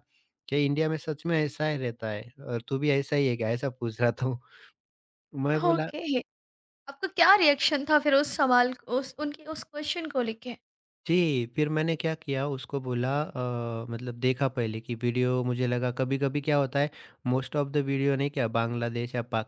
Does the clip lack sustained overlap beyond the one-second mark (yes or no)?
yes